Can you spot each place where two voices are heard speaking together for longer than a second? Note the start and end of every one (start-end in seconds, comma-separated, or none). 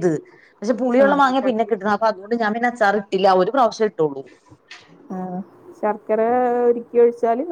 none